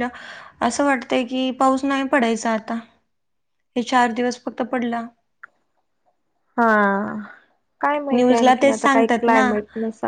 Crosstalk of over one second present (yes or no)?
yes